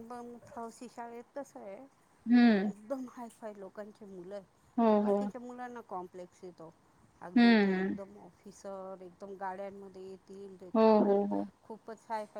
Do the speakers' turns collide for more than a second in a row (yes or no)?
no